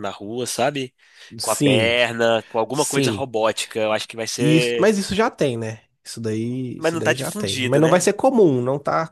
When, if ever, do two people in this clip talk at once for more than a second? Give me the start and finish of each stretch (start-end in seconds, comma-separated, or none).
6.8-8.1